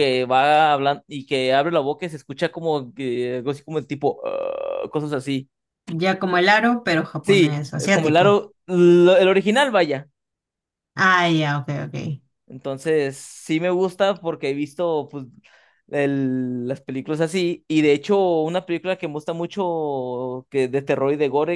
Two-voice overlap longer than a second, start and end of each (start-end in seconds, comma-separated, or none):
7.2-8.4